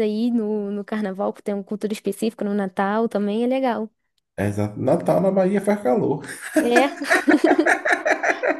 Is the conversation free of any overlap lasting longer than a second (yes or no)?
yes